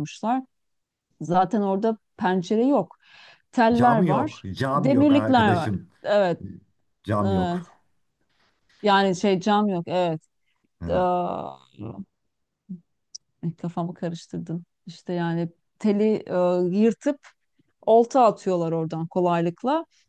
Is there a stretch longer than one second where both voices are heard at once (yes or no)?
yes